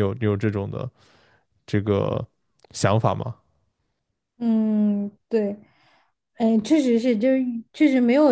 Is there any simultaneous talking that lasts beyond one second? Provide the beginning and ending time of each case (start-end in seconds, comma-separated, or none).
none